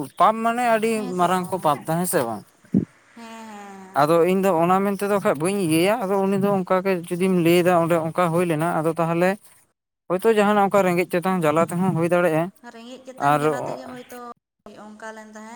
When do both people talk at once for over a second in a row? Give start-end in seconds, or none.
11.1-12.4